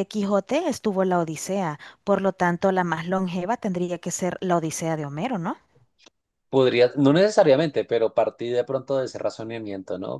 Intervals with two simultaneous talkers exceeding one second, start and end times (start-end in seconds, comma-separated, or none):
none